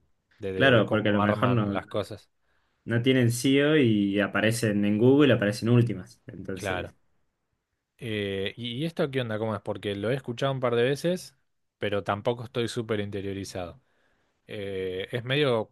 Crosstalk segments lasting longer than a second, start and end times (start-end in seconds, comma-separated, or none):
0.5-1.8